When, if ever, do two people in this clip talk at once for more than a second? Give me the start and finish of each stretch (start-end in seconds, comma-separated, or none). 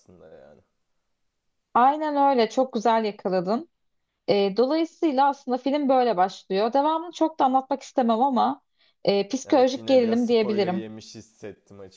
9.4-10.8